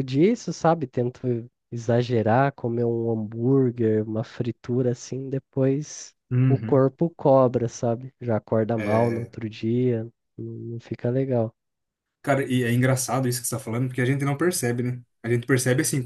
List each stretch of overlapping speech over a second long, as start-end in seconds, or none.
none